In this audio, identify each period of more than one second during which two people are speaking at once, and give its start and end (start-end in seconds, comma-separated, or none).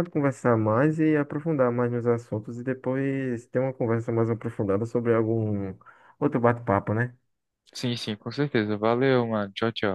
none